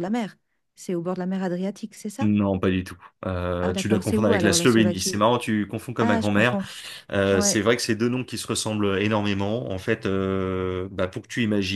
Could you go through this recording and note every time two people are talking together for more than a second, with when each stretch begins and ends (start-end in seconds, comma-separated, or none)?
3.6-5.2